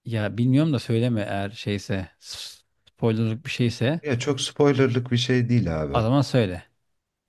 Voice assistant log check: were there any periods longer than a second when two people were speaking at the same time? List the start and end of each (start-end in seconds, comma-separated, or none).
none